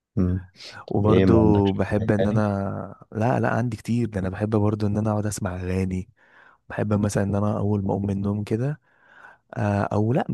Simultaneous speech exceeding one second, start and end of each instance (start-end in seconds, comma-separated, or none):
0.9-2.4